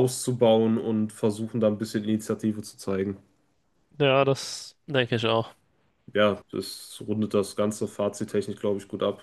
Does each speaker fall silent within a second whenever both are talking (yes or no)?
yes